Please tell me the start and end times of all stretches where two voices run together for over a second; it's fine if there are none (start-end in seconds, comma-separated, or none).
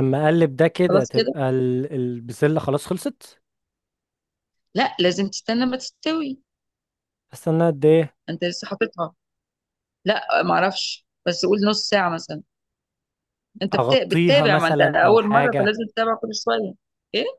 13.7-15.8